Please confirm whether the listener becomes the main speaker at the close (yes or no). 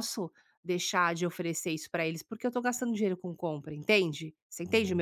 yes